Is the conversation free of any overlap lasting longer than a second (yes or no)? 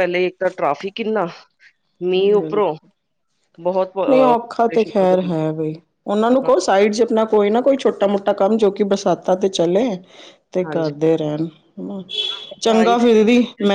no